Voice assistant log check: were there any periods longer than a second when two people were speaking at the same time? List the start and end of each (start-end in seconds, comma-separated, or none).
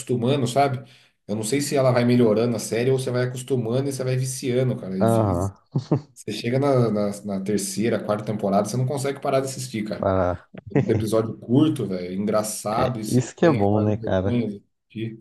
12.8-14.4